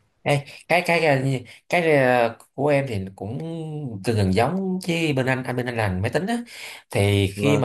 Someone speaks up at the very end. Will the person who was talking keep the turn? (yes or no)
yes